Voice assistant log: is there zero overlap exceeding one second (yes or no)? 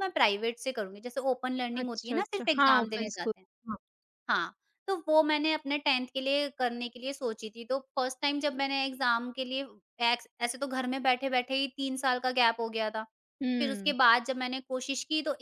no